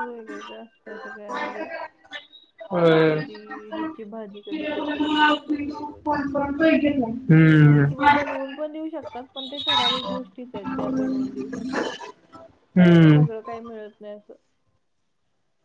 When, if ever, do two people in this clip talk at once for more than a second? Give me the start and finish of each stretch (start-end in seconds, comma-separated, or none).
none